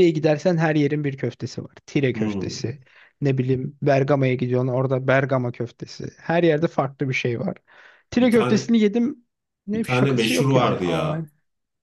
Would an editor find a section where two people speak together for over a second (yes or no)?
yes